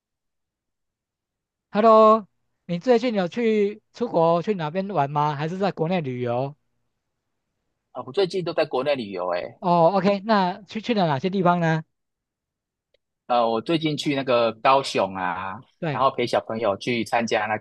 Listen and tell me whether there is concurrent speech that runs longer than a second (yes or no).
no